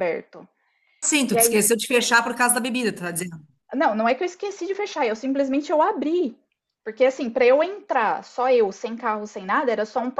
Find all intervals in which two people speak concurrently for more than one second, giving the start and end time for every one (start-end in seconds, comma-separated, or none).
none